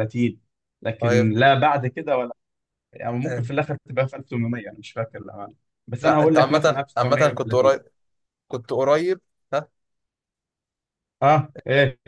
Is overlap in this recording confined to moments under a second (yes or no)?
no